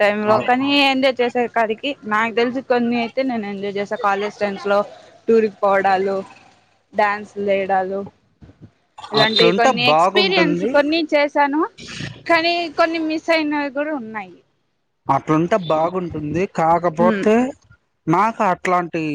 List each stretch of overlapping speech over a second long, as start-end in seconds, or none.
9.2-10.7